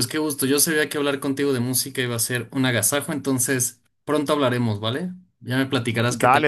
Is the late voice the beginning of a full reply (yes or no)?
no